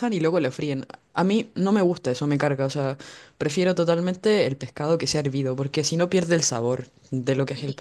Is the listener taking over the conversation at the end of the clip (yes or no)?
yes